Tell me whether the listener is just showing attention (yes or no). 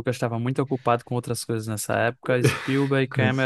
yes